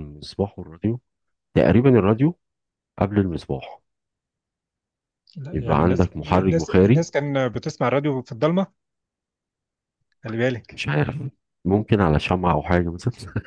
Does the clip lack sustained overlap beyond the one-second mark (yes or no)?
no